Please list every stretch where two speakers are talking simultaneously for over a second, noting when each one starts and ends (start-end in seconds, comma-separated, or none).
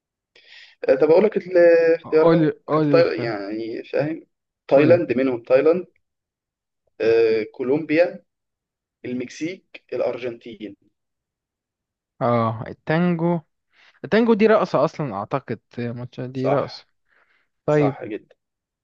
2.0-3.3